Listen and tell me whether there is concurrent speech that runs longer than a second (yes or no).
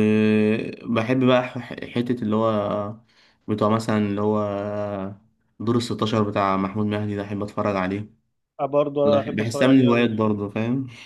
yes